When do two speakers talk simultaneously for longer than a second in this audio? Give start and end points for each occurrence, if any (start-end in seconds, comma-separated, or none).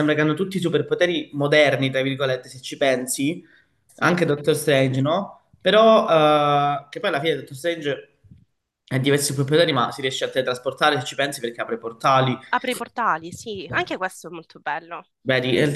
none